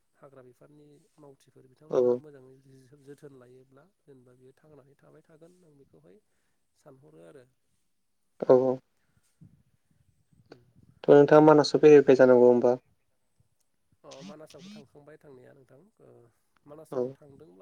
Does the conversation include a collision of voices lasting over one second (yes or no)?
no